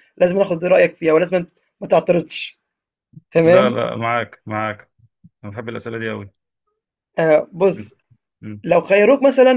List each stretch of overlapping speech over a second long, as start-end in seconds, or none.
none